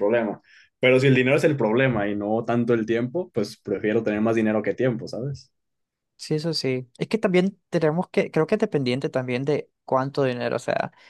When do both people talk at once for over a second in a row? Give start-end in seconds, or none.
none